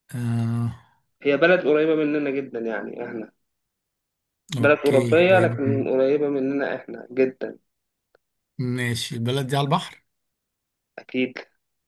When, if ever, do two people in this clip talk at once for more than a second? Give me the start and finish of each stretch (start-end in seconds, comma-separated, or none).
4.6-5.9